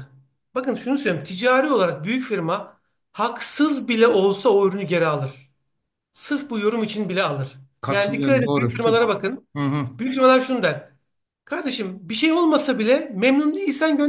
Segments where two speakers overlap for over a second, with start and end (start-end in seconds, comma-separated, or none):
7.8-9.0